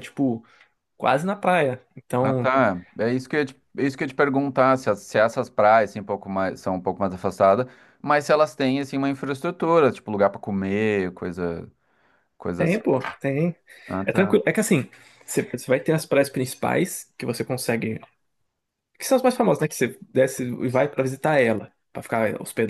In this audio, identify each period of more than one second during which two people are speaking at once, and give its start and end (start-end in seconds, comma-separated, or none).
none